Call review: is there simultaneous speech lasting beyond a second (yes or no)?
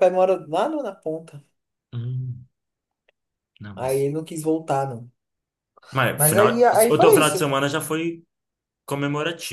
yes